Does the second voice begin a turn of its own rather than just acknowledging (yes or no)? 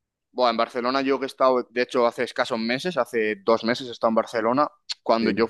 no